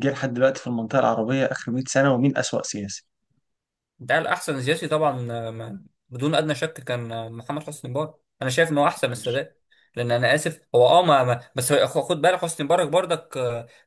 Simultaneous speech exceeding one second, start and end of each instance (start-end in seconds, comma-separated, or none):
none